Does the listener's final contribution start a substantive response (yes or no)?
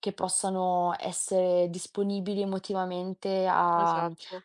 no